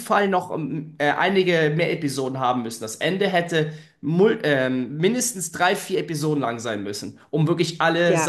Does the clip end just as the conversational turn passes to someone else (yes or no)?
no